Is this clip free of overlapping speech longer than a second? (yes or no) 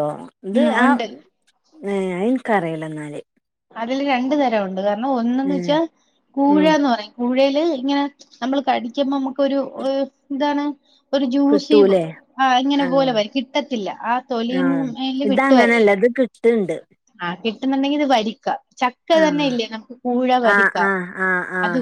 yes